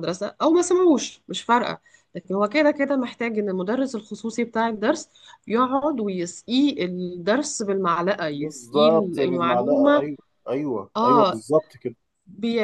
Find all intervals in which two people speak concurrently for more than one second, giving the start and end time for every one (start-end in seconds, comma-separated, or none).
8.3-10.1